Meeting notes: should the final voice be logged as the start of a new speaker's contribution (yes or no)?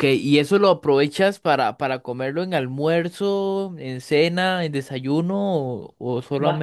yes